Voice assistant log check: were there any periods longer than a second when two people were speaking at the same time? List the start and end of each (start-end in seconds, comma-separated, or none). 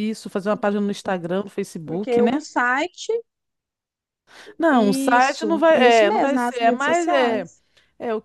4.7-7.5